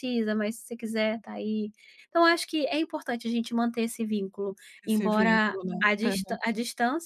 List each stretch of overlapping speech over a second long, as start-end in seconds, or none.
4.8-6.4